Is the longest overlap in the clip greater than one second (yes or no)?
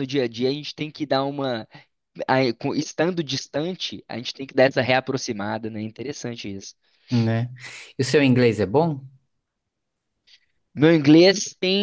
no